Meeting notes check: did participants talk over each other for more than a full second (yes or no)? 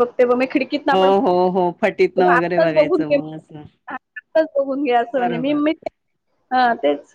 yes